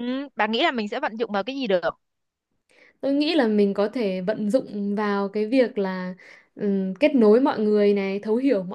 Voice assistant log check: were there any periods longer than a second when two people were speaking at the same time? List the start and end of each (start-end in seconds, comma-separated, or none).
none